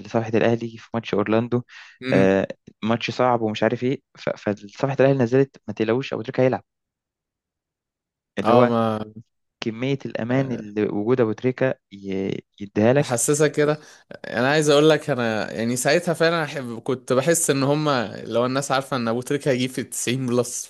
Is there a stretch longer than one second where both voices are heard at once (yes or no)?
no